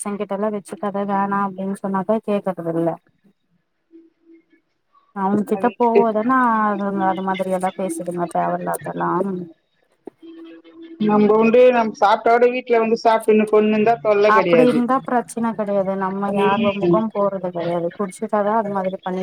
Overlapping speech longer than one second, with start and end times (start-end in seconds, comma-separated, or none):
none